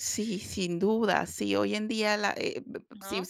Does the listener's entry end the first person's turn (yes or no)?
no